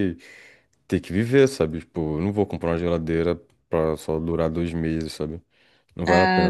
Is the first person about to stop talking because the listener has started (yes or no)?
yes